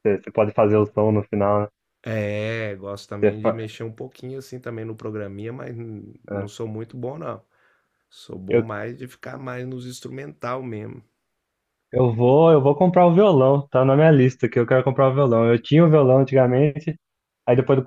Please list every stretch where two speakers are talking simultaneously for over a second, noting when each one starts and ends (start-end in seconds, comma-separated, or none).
none